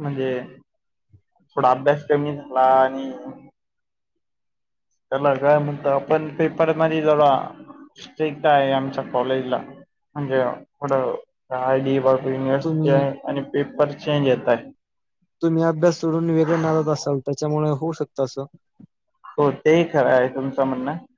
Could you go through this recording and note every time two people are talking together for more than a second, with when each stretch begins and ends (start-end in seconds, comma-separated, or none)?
none